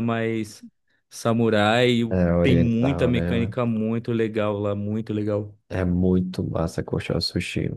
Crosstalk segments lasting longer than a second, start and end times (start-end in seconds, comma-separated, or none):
2.1-3.5